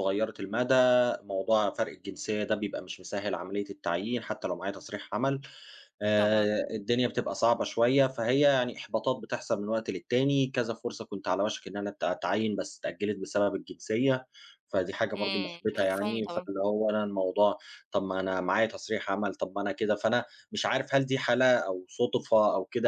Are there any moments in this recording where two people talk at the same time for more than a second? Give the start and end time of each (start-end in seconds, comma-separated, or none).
15.2-16.5